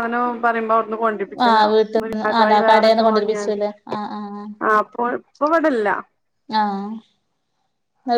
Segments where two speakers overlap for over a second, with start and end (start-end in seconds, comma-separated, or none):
1.4-3.6